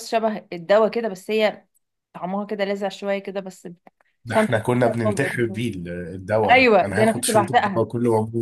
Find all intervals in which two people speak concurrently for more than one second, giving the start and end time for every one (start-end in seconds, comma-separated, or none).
4.3-5.6, 6.5-7.8